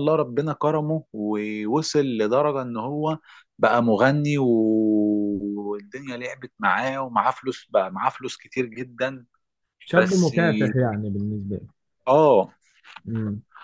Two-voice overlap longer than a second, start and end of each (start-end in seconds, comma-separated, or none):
none